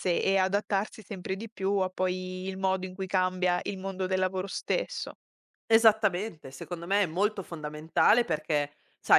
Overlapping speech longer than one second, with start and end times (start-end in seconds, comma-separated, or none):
none